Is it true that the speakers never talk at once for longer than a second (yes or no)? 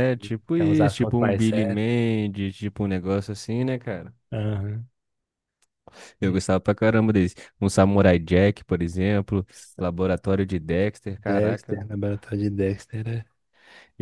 no